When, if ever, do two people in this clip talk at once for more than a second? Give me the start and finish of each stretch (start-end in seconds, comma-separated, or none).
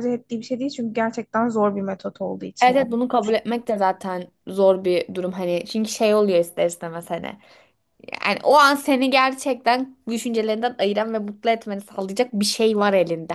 none